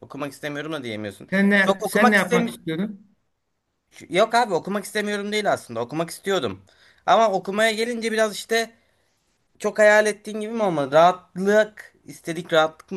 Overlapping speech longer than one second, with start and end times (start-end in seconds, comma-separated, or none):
1.3-2.7